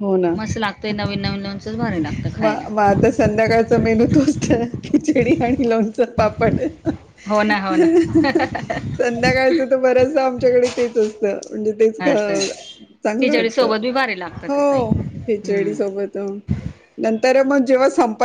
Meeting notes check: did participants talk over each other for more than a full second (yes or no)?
yes